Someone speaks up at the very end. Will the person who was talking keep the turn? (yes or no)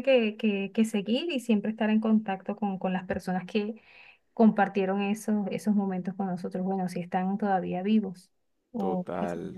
no